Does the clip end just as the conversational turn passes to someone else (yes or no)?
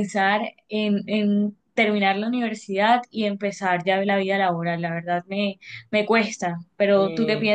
yes